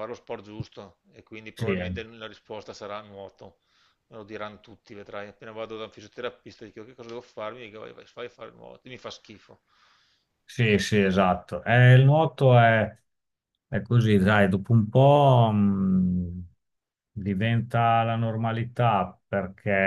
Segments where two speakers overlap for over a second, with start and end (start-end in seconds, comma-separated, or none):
none